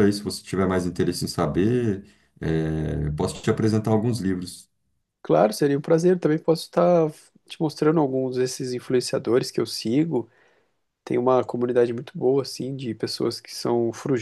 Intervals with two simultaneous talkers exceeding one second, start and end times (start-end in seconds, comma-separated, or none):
none